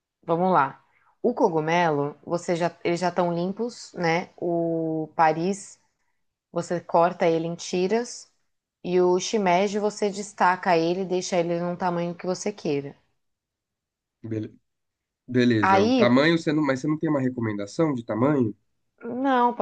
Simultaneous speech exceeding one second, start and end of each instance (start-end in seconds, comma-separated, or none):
none